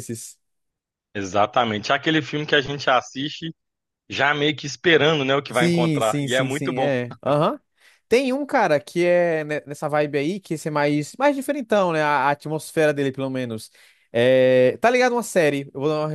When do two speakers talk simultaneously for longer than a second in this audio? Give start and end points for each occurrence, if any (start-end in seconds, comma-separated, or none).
5.5-6.9